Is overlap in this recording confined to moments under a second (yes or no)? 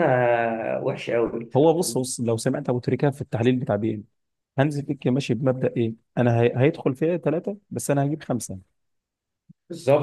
yes